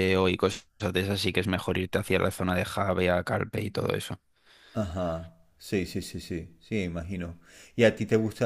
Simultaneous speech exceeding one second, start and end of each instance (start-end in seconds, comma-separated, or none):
none